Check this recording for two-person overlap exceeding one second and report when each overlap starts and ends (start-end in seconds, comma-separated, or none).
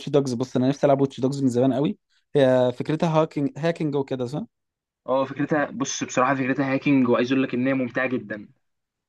none